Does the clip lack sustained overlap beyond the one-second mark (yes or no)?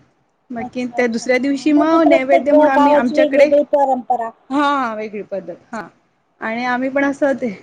no